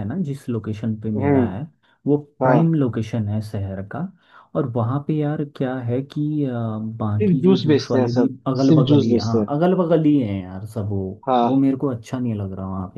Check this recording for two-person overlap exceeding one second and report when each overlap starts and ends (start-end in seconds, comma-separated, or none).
7.2-9.5